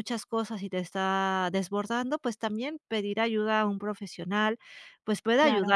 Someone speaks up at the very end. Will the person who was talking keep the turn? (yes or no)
yes